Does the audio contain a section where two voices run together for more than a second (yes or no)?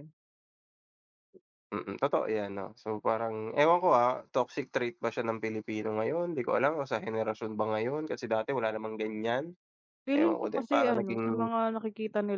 yes